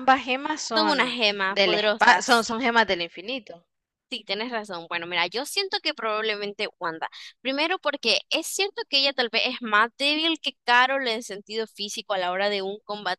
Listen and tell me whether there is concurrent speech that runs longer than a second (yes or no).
yes